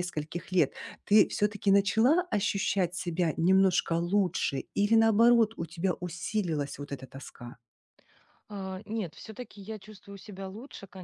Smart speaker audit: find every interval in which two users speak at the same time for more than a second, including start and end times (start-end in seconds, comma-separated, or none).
none